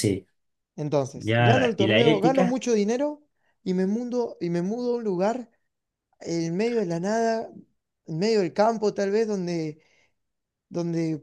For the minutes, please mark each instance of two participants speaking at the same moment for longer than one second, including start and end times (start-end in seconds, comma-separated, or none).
1.1-2.6